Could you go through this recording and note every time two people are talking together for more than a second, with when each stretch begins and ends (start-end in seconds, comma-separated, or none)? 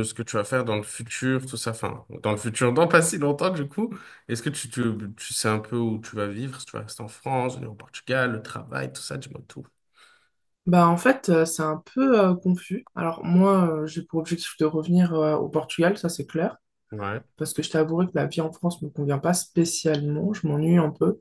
none